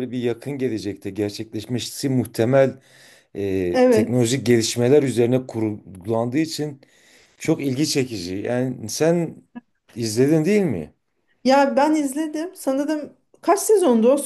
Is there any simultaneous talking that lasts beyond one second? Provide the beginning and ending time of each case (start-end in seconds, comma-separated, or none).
none